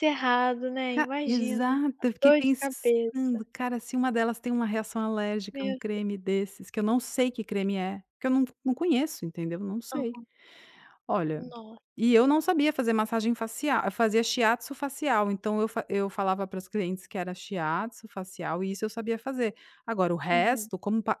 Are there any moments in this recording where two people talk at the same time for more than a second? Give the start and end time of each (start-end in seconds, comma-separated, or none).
0.9-3.5